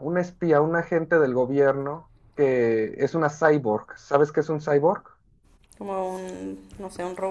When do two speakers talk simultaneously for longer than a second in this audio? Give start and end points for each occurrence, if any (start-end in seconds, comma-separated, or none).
none